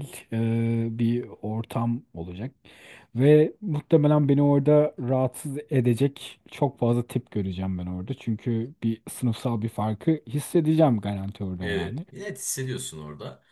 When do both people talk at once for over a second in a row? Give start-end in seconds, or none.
none